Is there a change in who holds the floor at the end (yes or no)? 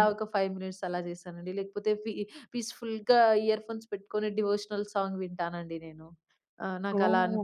yes